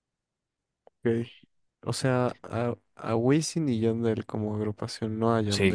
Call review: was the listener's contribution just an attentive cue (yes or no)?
no